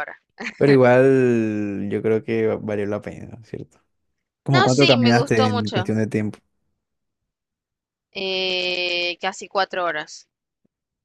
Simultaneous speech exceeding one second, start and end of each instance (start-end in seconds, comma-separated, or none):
4.5-5.9